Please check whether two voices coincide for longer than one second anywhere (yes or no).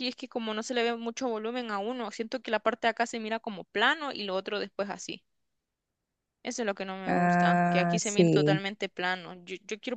yes